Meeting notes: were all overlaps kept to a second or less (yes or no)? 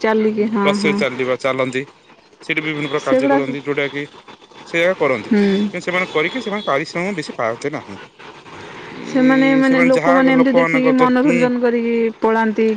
no